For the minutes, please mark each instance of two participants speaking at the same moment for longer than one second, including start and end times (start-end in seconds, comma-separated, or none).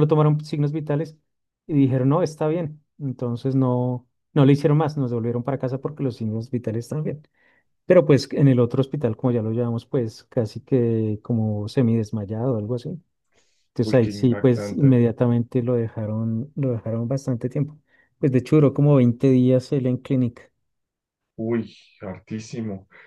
13.8-15.0